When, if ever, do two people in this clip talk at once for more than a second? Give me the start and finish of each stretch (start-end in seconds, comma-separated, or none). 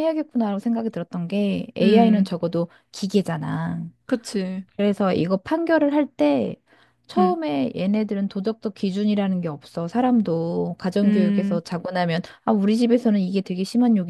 none